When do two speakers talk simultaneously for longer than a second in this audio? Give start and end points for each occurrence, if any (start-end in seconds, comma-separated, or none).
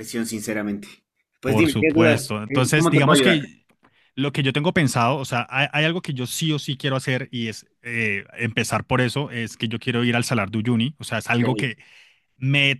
1.4-3.4